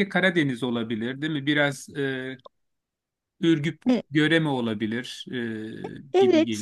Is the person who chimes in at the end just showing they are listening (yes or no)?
no